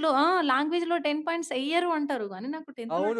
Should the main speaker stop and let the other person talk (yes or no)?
yes